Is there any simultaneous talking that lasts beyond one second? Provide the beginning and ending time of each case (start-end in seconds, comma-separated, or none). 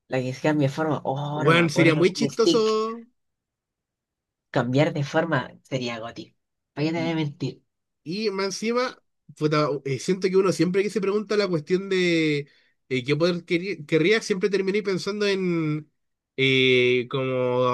1.3-2.7